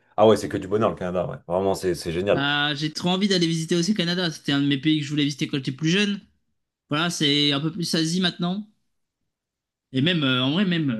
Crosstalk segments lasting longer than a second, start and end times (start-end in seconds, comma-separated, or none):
none